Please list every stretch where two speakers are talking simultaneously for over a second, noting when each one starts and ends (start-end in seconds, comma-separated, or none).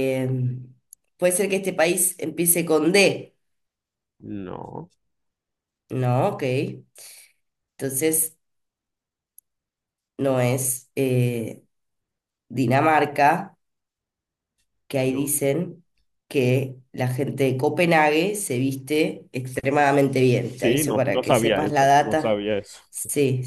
20.5-22.4